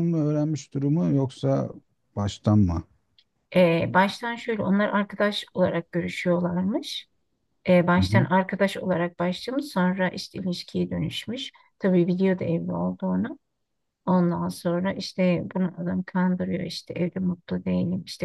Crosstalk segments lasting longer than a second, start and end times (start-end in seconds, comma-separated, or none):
none